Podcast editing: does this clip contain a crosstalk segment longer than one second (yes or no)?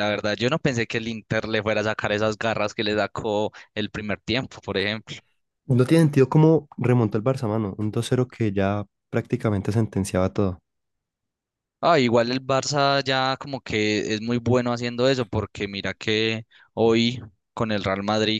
no